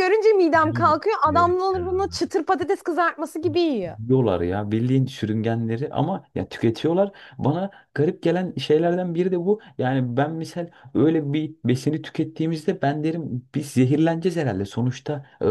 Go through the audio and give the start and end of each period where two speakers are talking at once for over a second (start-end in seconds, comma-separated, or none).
0.5-2.2